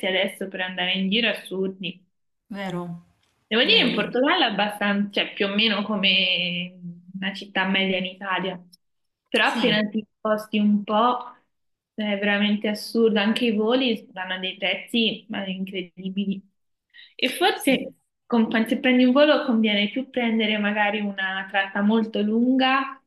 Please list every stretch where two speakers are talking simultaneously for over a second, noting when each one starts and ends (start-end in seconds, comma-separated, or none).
none